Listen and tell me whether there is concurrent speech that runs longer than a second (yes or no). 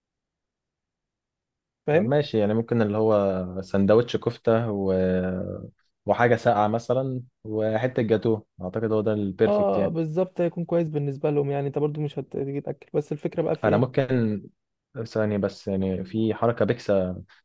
no